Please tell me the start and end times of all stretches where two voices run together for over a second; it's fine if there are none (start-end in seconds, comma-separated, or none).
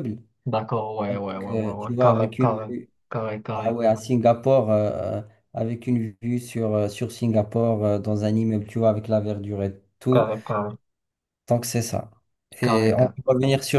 1.1-2.7